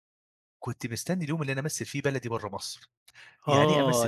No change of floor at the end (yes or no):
no